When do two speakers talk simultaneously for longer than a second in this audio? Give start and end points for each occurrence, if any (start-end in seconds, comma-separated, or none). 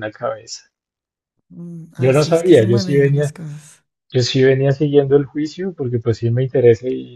2.0-3.3